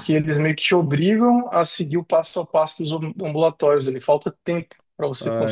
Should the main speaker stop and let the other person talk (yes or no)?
yes